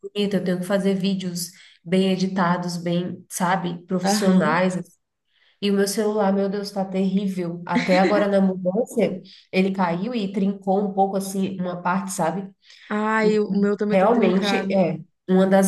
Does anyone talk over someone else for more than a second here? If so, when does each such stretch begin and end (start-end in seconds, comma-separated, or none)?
13.2-14.8